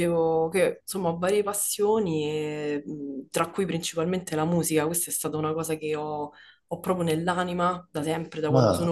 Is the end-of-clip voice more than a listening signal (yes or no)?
no